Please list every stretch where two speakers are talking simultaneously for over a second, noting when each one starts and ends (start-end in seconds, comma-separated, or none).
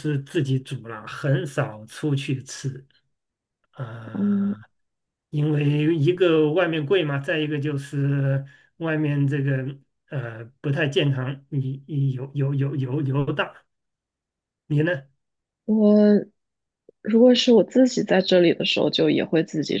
none